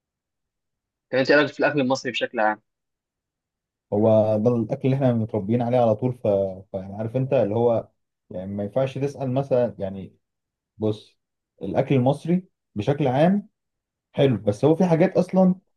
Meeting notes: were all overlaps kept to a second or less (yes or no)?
yes